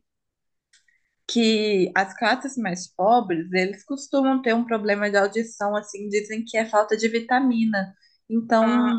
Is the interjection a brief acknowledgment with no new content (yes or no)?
yes